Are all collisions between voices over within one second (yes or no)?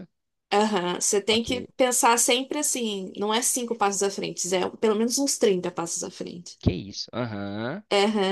yes